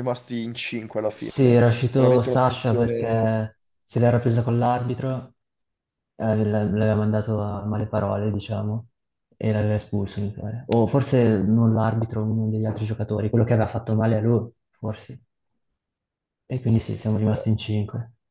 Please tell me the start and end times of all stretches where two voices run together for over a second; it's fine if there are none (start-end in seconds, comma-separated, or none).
1.1-3.4